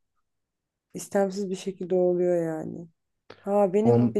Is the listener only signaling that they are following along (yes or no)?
yes